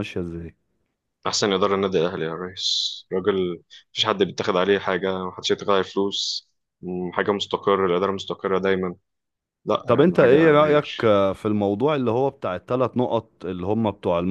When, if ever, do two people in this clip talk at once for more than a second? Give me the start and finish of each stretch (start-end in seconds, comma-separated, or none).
9.9-11.1